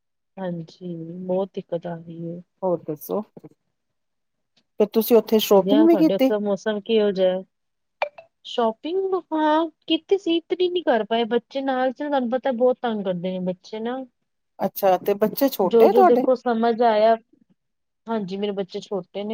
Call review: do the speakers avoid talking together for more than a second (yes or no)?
yes